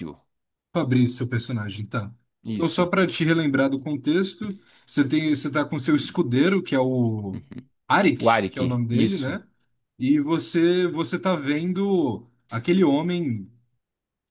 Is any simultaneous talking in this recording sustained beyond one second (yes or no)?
yes